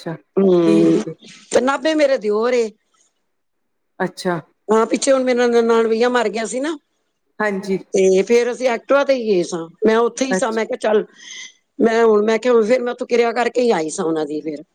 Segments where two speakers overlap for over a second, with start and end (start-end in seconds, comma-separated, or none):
none